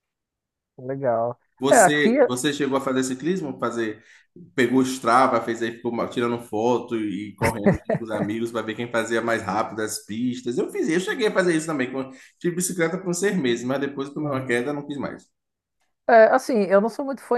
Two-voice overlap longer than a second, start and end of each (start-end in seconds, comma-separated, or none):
none